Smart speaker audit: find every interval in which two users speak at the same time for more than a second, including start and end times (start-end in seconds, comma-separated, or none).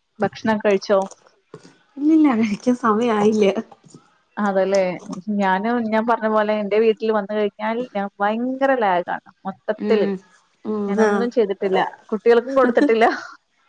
none